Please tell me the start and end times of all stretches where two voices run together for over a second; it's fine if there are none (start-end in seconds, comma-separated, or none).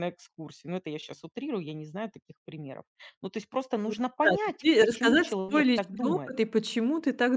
4.2-6.3